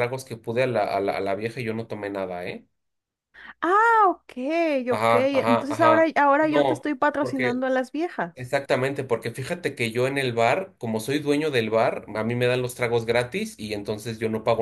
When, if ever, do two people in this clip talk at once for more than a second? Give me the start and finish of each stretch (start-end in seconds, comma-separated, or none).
4.9-7.6